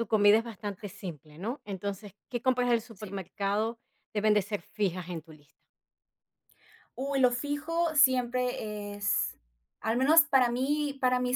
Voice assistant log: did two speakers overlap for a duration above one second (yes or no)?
no